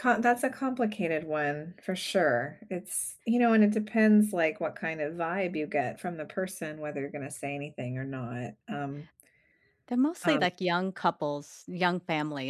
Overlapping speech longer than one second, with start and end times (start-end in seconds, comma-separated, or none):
none